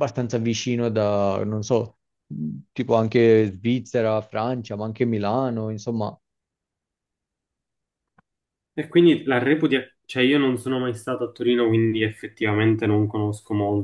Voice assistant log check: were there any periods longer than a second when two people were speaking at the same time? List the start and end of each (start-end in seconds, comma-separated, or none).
none